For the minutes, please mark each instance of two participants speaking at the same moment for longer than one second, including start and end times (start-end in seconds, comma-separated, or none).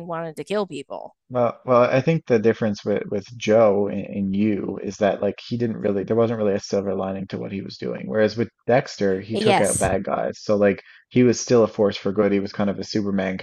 none